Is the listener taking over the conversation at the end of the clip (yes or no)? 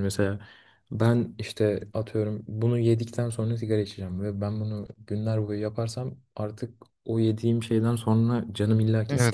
yes